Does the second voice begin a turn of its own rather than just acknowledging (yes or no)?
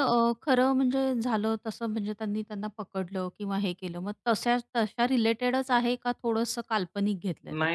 yes